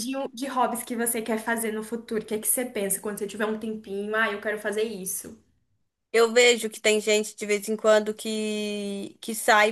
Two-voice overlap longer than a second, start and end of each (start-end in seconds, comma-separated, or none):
none